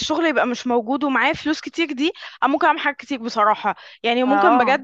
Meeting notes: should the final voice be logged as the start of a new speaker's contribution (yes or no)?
no